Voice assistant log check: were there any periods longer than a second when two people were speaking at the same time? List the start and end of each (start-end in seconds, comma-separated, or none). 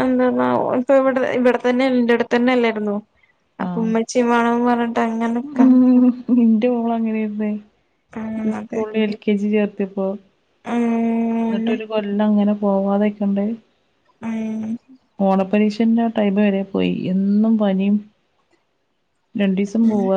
none